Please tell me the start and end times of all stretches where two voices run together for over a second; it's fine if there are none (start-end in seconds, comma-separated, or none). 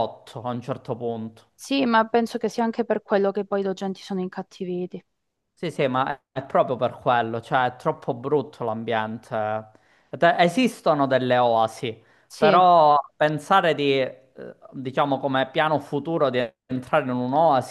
none